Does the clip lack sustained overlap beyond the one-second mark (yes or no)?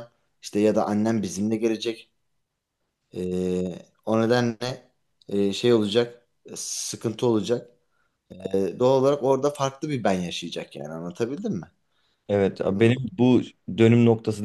yes